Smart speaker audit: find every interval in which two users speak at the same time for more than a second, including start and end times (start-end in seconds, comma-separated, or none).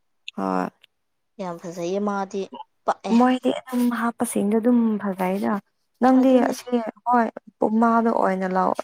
none